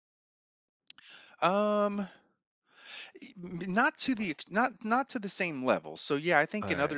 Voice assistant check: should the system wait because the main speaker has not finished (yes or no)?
yes